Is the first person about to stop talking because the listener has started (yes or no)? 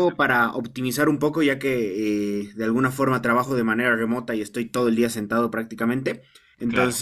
no